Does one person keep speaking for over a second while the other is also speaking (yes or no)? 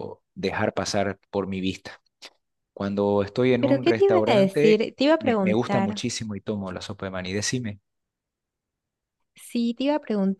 yes